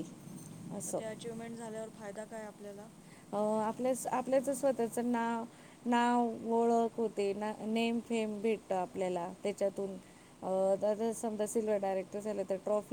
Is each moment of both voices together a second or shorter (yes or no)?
yes